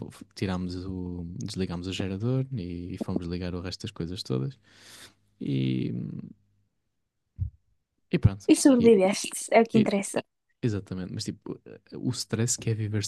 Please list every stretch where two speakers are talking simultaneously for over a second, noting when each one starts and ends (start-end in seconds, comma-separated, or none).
none